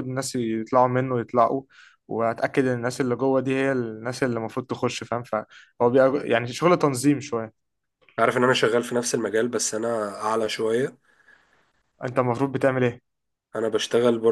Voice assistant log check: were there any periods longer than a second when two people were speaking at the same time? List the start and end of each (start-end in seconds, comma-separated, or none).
none